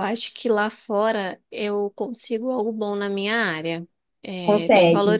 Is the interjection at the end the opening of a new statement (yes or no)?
no